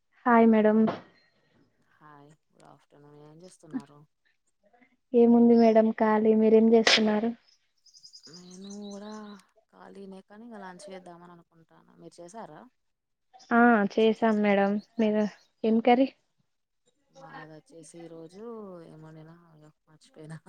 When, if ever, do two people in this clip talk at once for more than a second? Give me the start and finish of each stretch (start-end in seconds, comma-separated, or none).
none